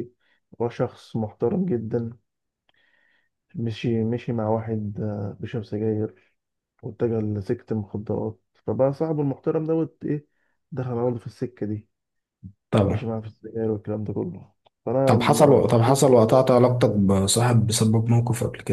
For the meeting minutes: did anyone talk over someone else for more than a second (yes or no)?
yes